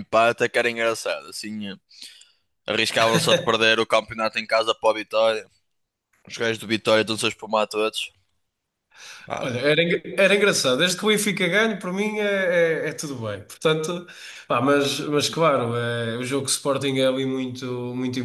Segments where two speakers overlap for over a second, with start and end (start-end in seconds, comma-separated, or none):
none